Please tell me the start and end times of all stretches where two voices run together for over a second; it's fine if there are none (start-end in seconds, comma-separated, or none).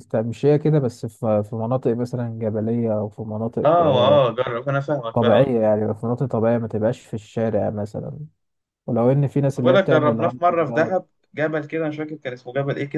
9.6-10.9